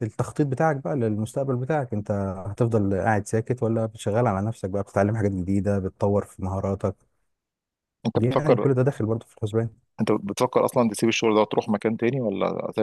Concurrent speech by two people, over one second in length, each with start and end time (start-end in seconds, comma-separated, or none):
none